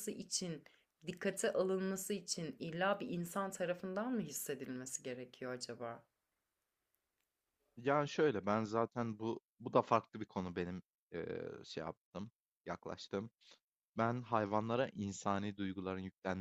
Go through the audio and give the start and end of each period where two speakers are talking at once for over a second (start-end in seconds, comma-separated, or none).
none